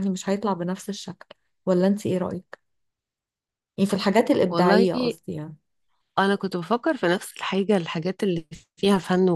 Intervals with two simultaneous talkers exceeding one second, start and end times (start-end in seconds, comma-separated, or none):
none